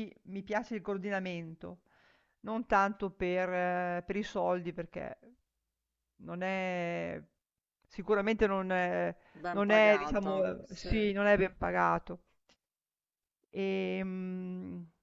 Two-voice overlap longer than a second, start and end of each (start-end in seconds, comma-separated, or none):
9.5-11.1